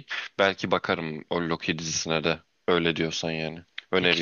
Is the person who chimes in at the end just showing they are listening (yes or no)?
no